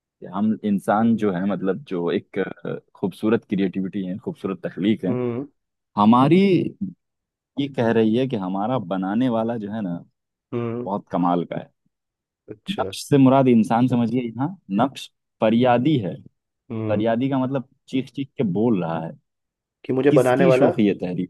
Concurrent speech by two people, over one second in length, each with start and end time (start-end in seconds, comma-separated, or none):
none